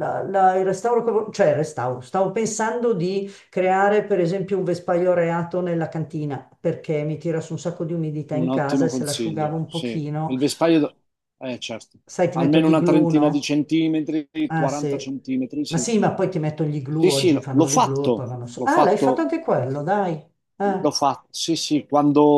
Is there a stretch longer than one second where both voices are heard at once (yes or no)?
yes